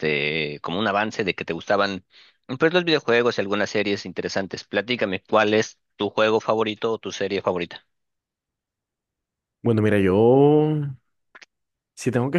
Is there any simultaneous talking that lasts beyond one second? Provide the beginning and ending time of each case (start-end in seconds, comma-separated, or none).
none